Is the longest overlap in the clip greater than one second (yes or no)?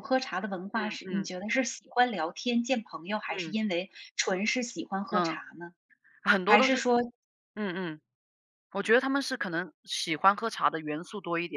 no